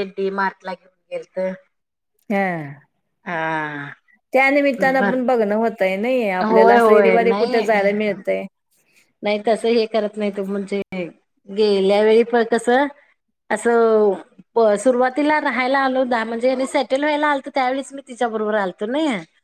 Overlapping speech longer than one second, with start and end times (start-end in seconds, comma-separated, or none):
6.4-7.9